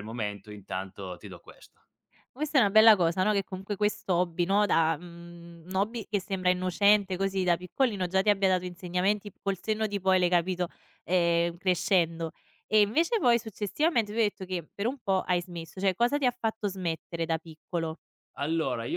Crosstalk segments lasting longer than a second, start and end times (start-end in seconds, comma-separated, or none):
none